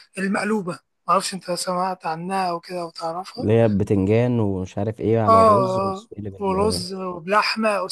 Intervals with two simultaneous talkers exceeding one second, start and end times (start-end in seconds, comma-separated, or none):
5.3-6.8